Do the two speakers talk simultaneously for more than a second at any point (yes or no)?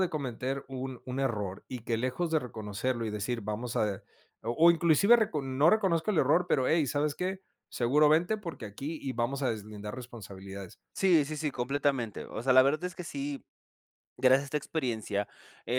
no